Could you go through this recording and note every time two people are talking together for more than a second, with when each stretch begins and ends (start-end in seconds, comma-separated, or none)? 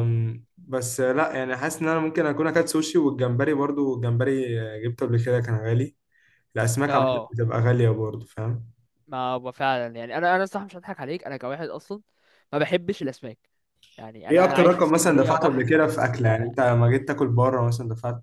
14.3-16.6